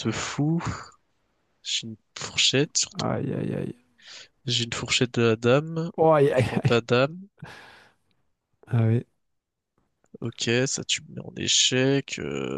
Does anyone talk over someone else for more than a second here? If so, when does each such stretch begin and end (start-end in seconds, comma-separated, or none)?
none